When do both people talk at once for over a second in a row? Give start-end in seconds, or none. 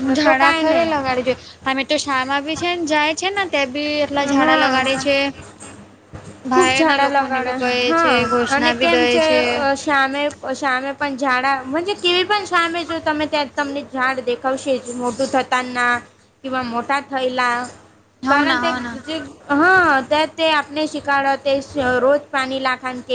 6.5-9.0